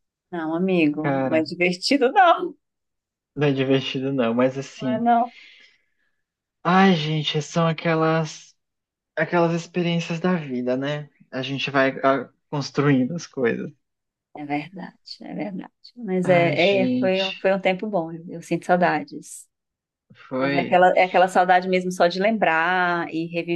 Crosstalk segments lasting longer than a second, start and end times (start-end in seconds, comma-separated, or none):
16.2-17.5